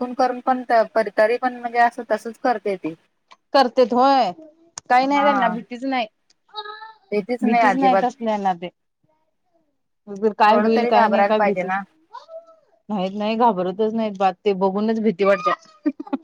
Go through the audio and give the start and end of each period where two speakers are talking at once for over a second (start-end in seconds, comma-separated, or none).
10.5-11.7